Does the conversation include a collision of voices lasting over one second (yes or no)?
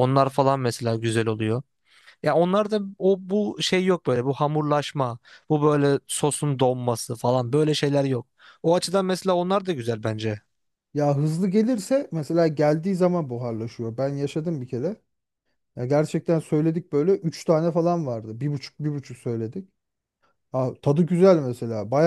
no